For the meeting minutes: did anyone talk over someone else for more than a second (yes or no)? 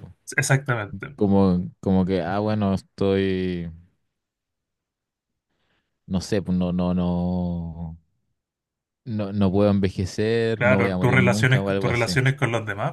yes